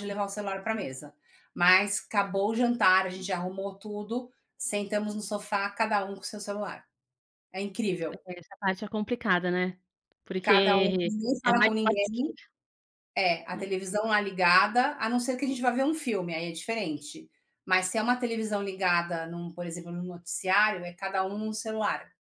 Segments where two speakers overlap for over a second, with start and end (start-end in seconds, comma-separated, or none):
10.4-12.2